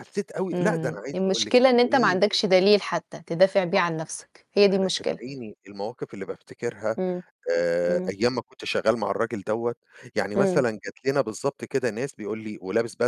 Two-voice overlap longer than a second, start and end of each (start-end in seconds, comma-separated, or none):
0.5-2.2